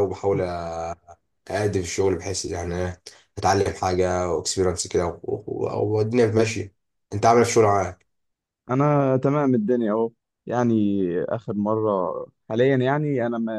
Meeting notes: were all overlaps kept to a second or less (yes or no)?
yes